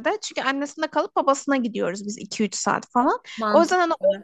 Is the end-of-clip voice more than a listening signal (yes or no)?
no